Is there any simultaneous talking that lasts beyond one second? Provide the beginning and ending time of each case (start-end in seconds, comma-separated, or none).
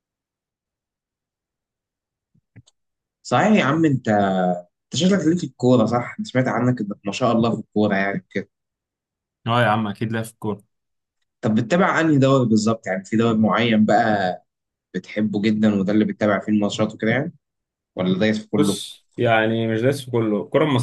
none